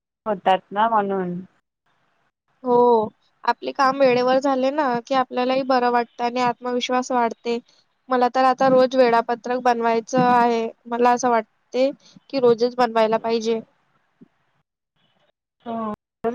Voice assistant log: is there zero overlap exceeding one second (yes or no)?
yes